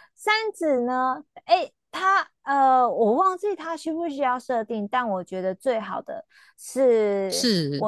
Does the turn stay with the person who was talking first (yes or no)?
yes